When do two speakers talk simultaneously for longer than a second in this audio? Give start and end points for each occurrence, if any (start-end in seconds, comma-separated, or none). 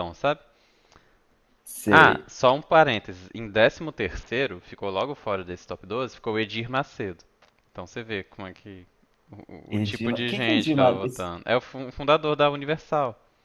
9.7-11.0